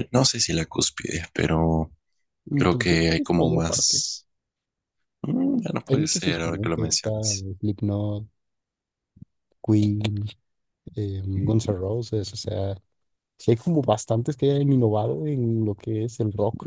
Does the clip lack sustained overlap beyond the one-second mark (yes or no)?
no